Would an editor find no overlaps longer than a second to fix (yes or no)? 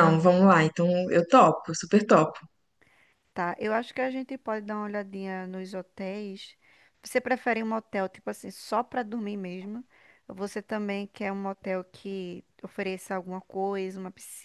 yes